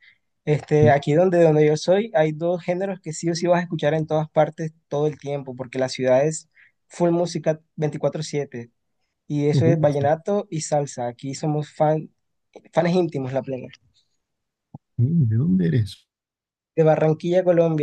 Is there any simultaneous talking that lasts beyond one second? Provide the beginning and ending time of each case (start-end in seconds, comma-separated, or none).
none